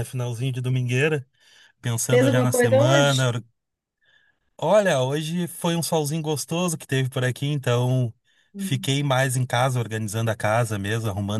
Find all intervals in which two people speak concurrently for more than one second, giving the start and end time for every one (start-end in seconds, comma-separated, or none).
2.1-3.3